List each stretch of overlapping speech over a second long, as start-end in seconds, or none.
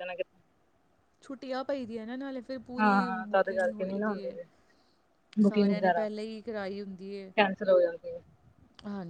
2.8-4.4